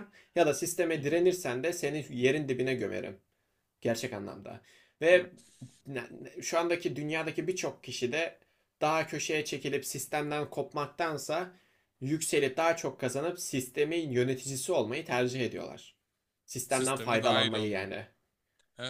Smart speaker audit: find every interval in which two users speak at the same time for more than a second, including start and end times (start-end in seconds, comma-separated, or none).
16.7-17.9